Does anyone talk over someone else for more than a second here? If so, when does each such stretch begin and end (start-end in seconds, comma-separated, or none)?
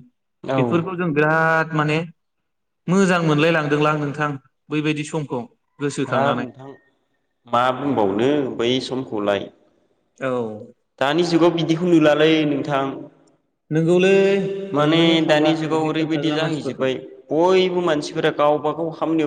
14.8-16.9